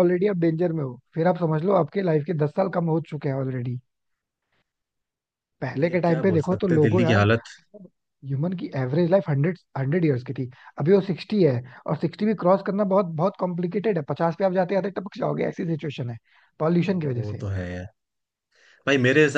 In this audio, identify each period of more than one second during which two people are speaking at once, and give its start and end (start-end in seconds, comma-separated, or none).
5.8-7.2